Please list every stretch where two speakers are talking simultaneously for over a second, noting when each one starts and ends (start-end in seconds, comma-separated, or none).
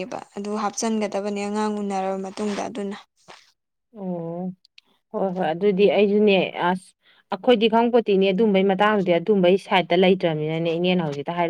none